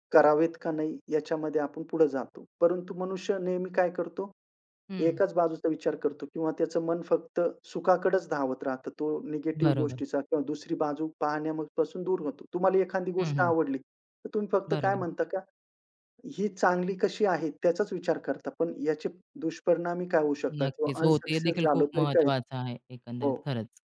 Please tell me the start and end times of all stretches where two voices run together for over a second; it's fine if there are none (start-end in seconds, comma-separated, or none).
20.6-22.3